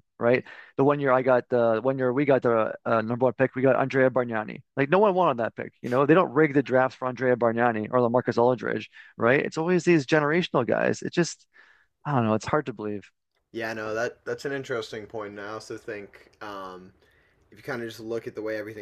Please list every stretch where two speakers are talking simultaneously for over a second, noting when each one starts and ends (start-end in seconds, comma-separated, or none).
none